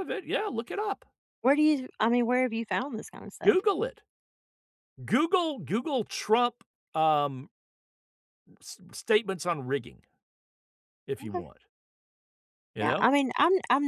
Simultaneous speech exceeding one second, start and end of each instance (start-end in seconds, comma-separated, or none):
none